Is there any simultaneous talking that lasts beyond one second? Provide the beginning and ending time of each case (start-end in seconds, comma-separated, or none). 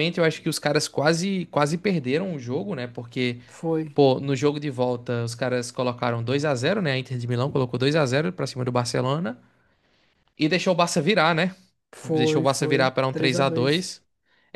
12.0-13.9